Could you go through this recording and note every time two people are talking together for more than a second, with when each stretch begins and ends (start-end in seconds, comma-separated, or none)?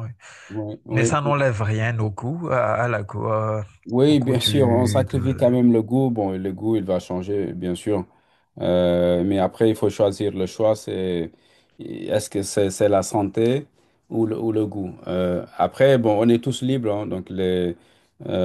4.1-5.4